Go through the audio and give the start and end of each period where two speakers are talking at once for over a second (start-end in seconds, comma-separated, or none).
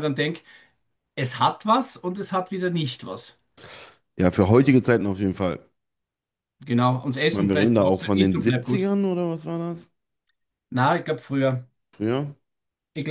7.3-8.9